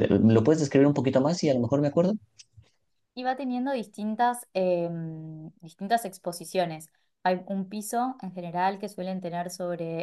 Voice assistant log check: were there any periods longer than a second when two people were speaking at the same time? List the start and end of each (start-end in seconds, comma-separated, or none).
none